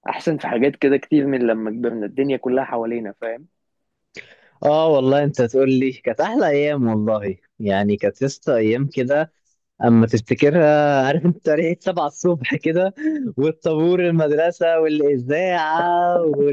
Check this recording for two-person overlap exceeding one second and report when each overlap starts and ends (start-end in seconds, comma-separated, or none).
none